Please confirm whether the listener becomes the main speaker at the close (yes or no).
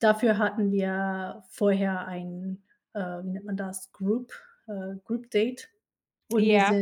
no